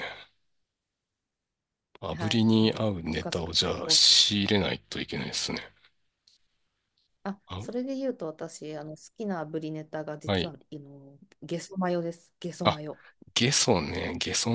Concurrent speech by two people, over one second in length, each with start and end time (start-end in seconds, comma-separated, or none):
2.1-4.0